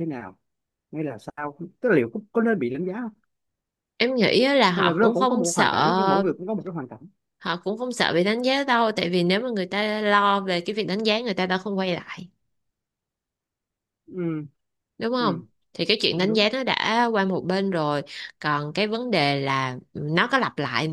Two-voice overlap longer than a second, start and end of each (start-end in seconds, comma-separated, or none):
4.8-6.3